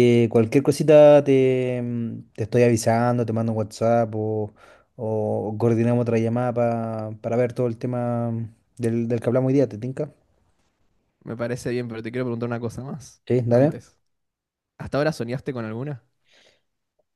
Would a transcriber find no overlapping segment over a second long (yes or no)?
yes